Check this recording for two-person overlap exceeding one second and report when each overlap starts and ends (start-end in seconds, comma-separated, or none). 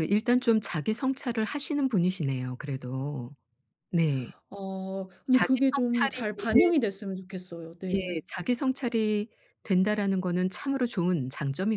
5.3-6.7